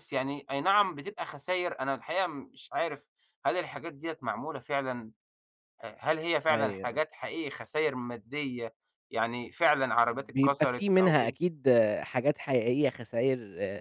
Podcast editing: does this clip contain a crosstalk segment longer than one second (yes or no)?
yes